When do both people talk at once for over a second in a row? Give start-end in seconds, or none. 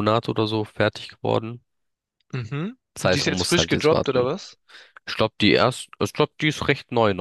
2.9-4.3